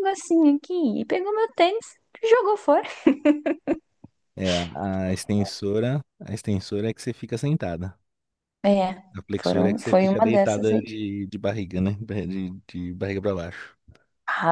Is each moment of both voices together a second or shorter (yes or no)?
no